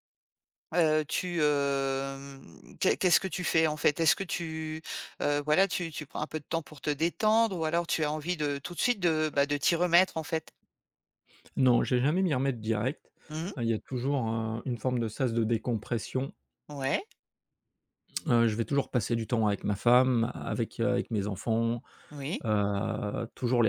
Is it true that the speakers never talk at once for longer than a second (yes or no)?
yes